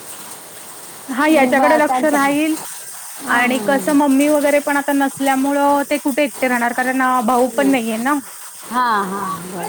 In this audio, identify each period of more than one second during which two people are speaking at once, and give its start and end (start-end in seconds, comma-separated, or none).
1.2-2.5